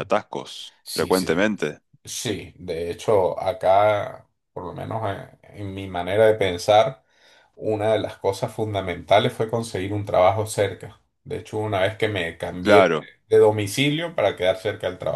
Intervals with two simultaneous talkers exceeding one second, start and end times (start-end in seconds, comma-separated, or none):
none